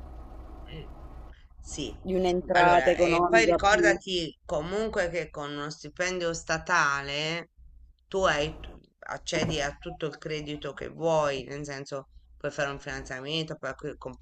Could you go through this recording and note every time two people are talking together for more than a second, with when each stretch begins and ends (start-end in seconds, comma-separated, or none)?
2.5-4.0